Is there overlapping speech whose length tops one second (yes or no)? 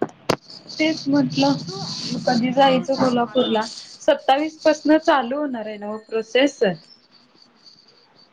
yes